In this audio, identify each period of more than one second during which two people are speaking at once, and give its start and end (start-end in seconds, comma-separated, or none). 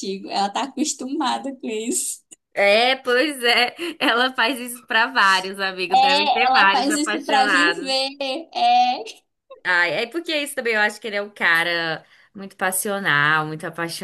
5.9-8.0